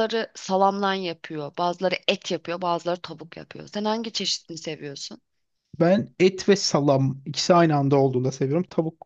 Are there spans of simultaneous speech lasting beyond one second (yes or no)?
no